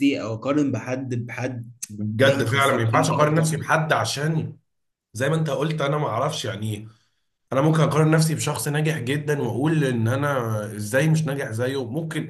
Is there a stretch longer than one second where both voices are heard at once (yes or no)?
yes